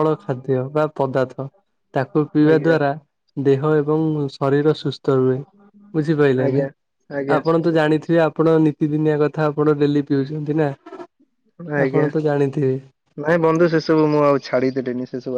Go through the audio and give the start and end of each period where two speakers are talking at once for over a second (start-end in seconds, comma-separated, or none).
none